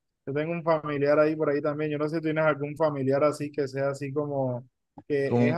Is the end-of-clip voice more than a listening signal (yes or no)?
no